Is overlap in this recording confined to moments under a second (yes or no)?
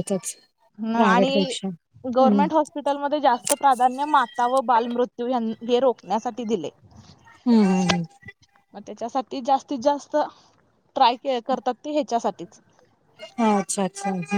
yes